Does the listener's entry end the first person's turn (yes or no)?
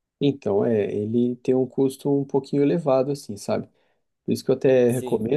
no